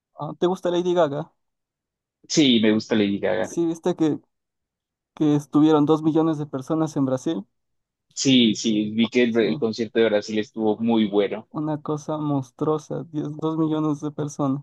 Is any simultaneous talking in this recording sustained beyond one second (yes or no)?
no